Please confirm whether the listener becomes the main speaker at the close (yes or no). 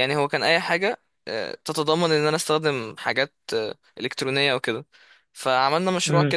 no